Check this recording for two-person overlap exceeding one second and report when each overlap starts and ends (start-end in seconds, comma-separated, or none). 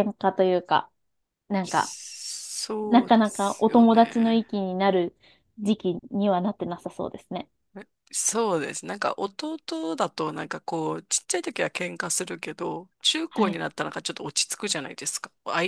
2.9-4.4